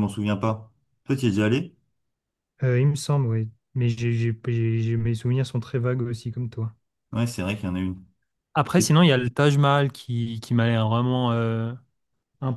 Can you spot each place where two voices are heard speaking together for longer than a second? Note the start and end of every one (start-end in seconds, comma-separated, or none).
none